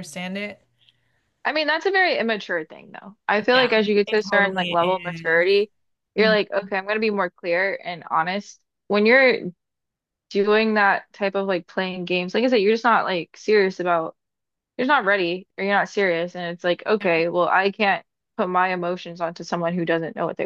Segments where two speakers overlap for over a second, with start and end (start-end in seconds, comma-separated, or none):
3.5-5.5